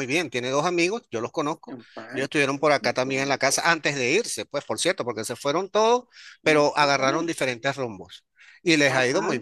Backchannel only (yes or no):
yes